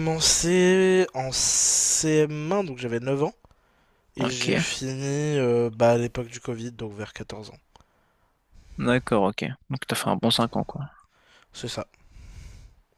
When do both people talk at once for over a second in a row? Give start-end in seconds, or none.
none